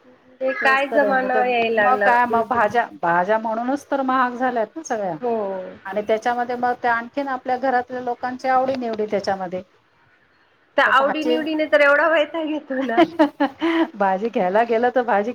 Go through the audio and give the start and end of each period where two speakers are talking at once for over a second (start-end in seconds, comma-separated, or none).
0.6-3.0